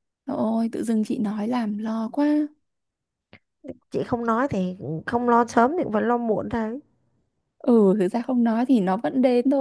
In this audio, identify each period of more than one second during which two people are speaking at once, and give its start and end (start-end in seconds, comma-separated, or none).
none